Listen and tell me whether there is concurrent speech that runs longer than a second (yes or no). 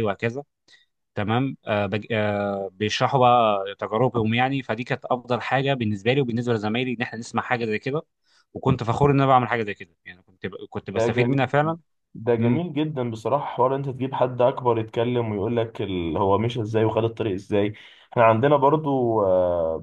no